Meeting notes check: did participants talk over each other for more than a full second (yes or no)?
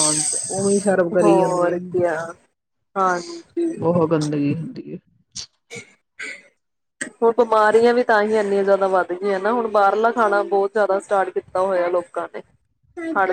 no